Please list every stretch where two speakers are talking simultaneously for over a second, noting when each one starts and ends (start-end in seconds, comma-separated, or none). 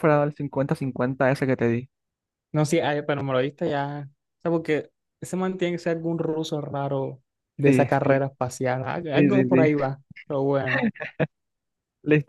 none